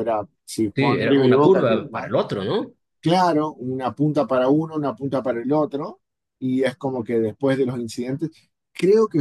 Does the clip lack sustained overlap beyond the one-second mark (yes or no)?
no